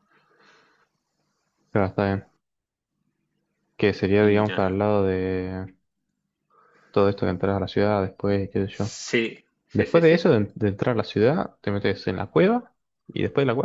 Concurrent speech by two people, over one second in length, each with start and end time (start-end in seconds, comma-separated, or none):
none